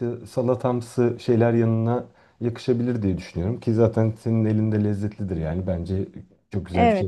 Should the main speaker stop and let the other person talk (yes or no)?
yes